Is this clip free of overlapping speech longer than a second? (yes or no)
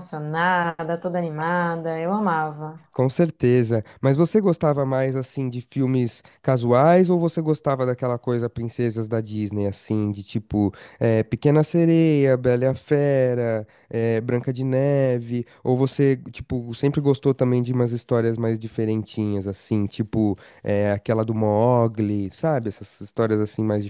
yes